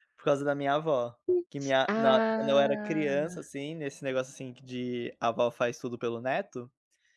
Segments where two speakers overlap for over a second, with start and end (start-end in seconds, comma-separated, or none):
1.3-3.1